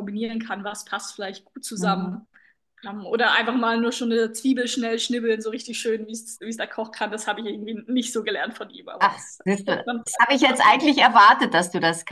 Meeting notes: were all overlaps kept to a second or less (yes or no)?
no